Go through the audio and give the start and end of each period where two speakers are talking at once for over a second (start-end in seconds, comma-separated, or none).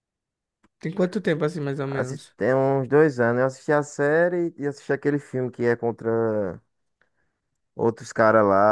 none